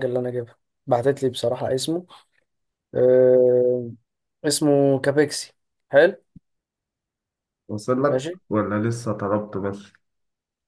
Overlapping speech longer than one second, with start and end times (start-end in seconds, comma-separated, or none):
none